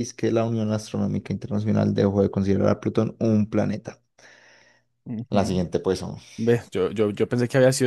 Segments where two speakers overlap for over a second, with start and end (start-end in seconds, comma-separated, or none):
none